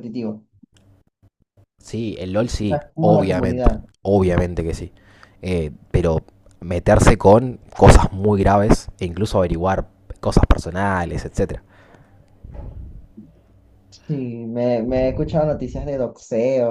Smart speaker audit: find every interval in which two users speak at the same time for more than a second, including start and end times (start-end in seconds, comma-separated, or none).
2.4-3.9